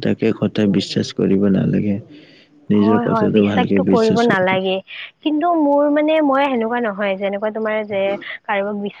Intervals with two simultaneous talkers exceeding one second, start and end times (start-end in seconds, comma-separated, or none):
2.8-4.7